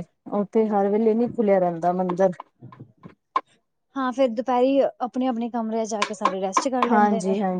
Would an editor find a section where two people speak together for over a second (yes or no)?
no